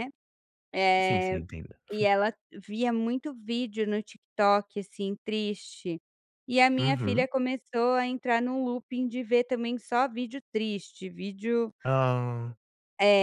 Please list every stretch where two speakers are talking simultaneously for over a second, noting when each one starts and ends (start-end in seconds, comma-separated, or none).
none